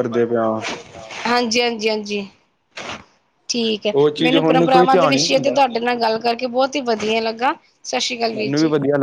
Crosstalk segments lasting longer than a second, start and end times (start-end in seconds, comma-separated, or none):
4.0-5.6